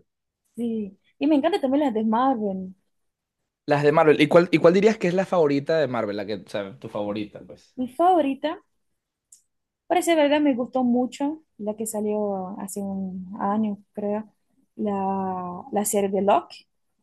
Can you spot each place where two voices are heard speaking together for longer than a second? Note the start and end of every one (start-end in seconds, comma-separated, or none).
none